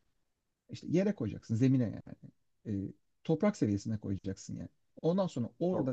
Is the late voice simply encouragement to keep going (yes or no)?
yes